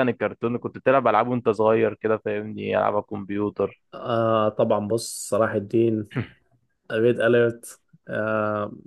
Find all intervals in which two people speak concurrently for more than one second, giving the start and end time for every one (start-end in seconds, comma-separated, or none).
none